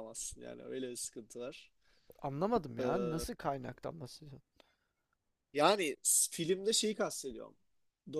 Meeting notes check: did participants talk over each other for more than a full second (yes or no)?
no